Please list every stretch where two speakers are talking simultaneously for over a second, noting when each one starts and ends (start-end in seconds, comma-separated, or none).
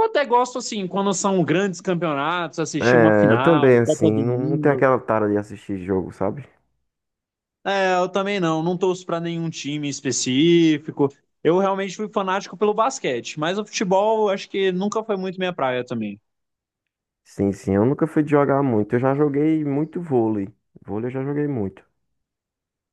2.8-4.8